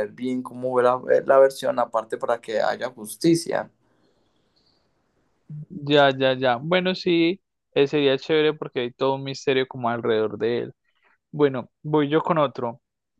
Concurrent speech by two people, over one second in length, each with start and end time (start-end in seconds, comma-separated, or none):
none